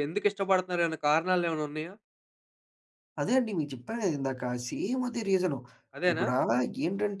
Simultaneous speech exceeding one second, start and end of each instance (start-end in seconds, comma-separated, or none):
none